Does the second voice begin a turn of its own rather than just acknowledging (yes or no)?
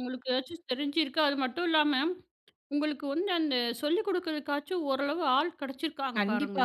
yes